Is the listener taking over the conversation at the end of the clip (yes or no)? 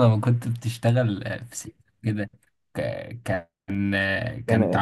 no